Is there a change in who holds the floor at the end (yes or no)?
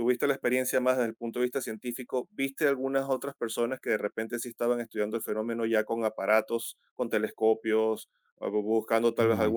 no